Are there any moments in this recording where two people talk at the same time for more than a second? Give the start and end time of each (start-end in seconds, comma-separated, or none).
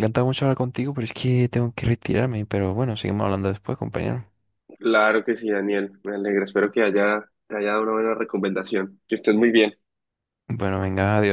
none